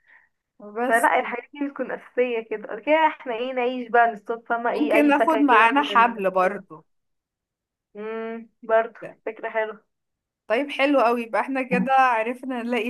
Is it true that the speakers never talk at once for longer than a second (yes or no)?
no